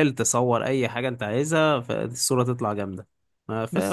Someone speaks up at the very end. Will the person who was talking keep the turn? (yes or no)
no